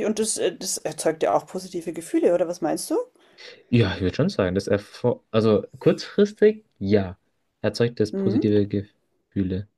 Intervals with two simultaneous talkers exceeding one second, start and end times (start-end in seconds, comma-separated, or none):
none